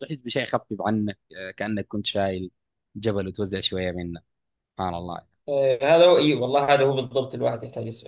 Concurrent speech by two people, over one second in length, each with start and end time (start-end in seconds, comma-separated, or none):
none